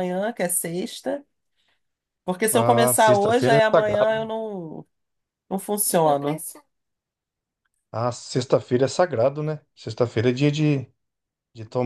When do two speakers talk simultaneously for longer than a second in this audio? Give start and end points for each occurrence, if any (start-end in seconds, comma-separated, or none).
2.5-4.3